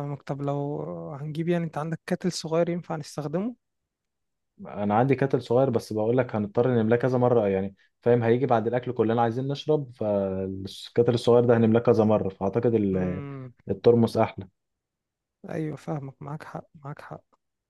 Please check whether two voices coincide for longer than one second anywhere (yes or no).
no